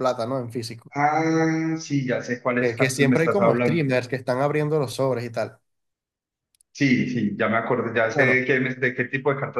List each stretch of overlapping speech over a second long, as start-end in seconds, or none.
2.6-4.0